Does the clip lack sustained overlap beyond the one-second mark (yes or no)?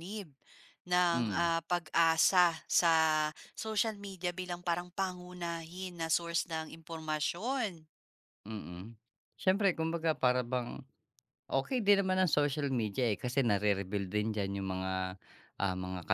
yes